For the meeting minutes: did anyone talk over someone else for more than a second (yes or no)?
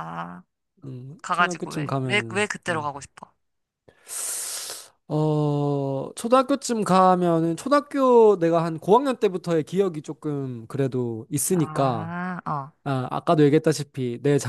yes